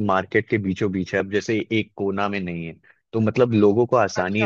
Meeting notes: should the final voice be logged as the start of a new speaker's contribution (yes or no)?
yes